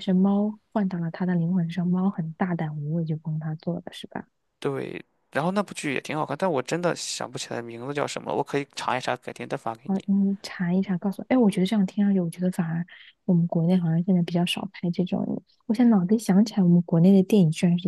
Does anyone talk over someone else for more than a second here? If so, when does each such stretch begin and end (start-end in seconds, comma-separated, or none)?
none